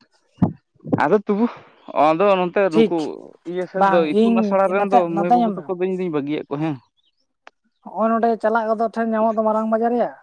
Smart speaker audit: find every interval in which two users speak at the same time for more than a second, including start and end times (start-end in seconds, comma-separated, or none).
3.7-5.6